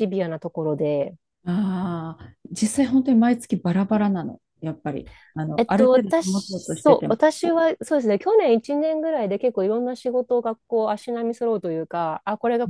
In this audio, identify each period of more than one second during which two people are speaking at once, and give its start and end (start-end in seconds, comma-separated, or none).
5.6-7.2